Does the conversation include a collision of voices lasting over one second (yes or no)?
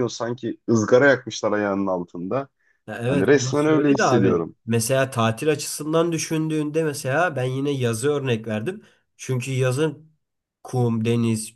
yes